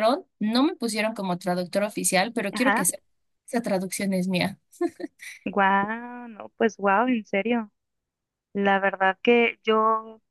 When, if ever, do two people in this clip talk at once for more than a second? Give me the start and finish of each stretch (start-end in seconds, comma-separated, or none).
none